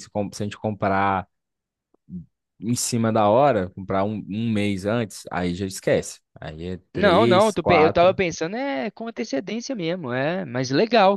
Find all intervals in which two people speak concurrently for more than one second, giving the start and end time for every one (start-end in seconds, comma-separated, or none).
6.9-8.2